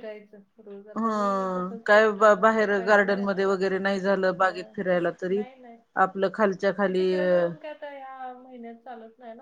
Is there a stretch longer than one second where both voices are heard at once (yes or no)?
yes